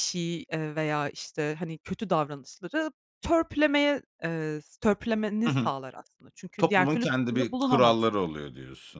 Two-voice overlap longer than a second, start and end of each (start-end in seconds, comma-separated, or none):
6.6-8.2